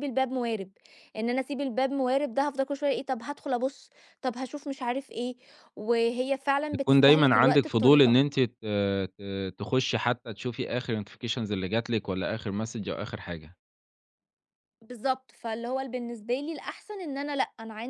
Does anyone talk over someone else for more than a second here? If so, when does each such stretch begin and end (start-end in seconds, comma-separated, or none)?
6.7-8.2